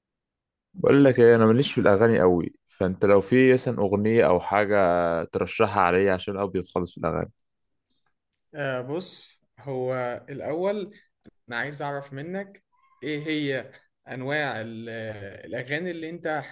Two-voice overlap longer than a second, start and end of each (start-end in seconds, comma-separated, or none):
none